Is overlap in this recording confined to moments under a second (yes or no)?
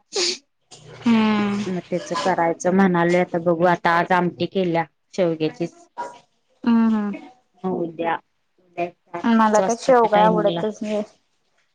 no